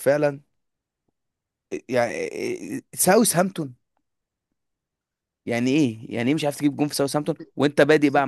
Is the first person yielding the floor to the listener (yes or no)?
no